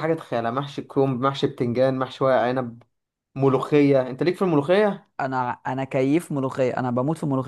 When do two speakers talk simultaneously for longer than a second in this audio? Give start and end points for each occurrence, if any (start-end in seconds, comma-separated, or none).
none